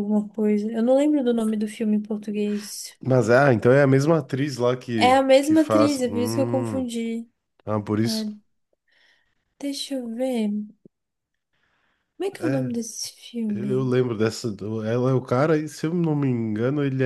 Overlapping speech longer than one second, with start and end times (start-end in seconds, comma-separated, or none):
5.0-6.9